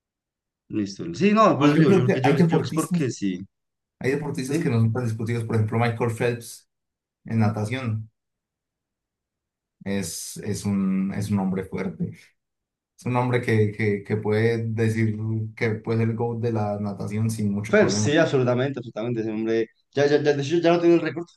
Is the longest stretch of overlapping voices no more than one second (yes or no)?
no